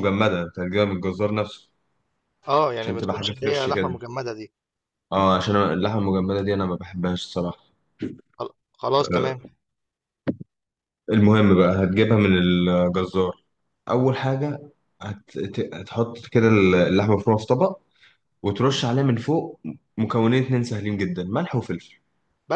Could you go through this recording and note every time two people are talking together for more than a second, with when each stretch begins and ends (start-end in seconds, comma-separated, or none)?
2.8-4.0